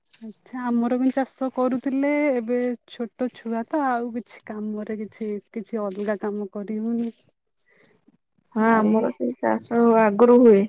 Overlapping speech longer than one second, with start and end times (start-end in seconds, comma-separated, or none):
none